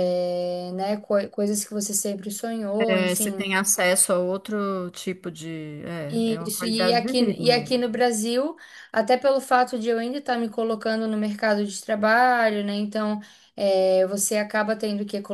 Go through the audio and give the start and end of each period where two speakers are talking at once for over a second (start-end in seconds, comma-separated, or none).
6.3-7.8